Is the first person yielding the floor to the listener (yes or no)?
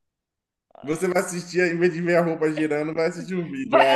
yes